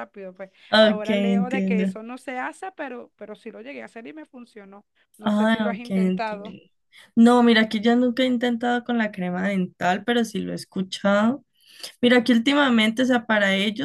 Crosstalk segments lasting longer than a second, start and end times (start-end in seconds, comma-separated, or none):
0.7-1.9, 5.2-6.5